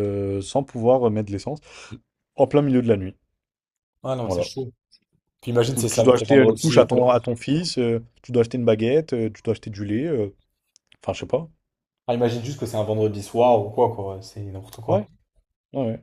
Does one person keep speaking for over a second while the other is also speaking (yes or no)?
yes